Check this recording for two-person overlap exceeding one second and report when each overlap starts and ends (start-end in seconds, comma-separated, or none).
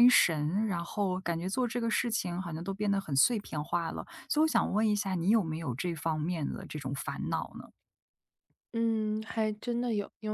none